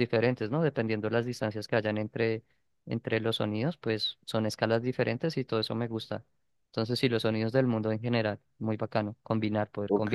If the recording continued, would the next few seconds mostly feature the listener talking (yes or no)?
yes